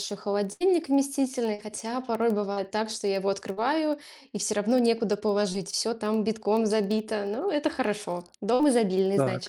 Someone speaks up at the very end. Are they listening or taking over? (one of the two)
taking over